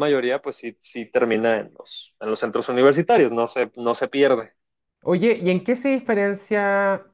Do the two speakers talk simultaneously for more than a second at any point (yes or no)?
no